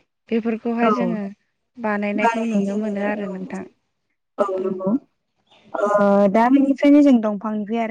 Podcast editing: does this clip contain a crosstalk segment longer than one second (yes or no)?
yes